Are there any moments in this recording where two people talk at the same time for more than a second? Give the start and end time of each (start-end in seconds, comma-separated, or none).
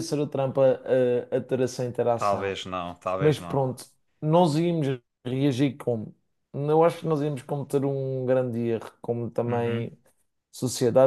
none